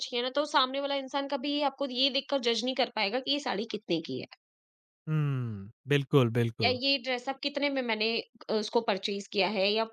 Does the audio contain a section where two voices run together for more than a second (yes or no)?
no